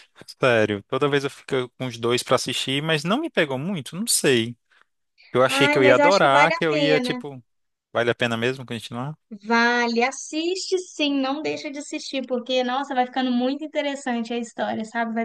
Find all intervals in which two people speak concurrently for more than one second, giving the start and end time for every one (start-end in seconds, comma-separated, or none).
5.5-7.2